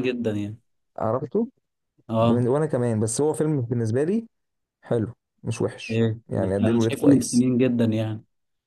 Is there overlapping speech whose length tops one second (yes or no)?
yes